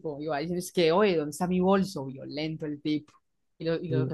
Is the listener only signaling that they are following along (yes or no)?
yes